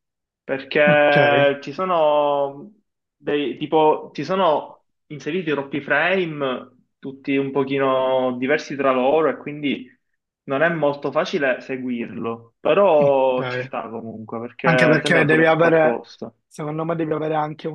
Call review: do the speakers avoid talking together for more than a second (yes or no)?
no